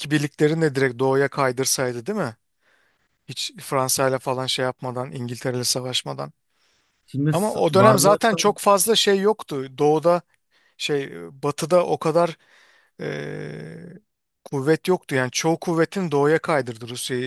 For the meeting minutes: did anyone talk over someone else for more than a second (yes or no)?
yes